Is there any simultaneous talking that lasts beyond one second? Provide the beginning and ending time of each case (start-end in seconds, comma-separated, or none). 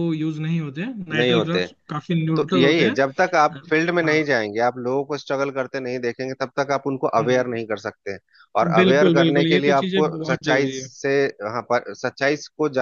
8.7-10.9